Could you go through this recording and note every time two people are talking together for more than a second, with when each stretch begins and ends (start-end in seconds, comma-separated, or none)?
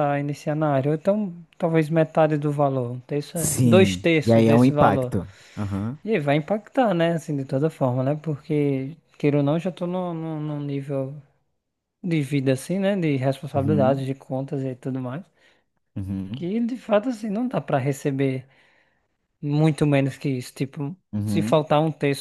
3.4-5.1